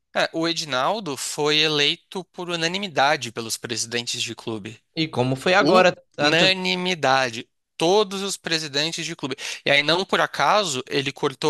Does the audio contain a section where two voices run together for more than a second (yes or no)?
no